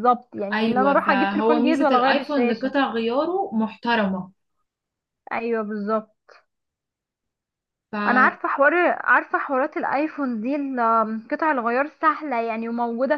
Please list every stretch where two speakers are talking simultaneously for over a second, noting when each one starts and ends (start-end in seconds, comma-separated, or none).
0.5-2.7